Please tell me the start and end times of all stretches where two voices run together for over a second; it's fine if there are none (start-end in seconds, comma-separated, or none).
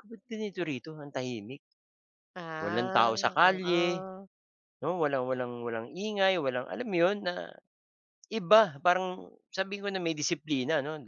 2.6-4.1